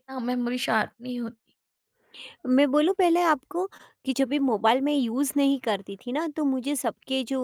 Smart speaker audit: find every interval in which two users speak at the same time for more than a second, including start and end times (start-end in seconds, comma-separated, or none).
none